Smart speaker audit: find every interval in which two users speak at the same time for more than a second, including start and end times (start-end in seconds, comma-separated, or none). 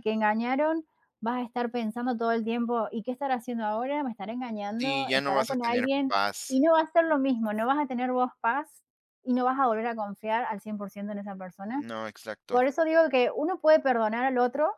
4.8-6.6